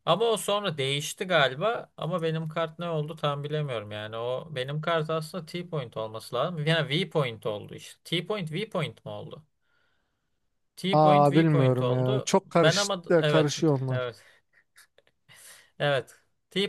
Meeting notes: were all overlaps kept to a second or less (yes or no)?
no